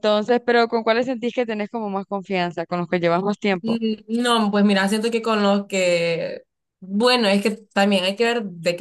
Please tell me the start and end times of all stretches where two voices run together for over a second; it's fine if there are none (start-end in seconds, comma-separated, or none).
none